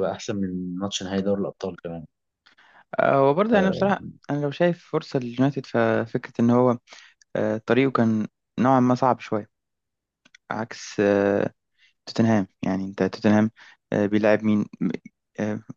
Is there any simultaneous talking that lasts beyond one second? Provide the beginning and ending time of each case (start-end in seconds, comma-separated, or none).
none